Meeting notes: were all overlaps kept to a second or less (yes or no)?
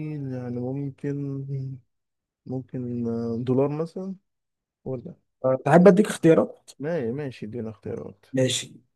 yes